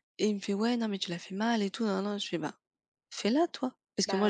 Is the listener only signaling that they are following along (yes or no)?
yes